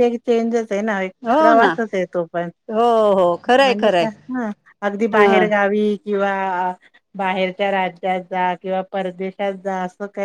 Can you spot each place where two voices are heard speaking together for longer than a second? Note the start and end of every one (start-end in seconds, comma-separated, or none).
none